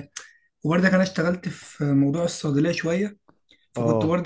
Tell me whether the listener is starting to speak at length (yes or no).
no